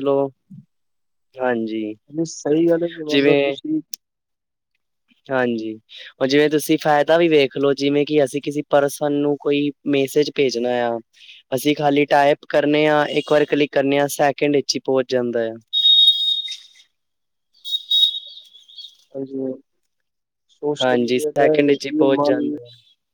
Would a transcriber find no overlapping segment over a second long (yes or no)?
no